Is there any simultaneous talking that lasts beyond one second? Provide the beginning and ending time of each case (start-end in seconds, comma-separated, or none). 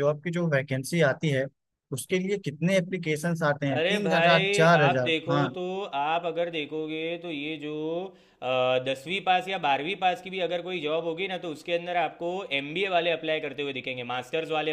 3.8-5.5